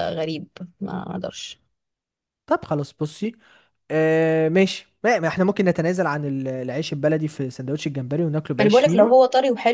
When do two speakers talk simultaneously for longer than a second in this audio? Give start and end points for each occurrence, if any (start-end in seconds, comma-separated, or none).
none